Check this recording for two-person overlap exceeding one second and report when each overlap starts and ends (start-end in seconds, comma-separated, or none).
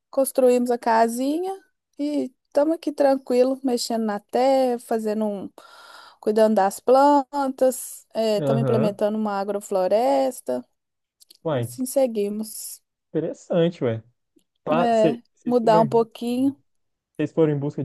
14.7-16.1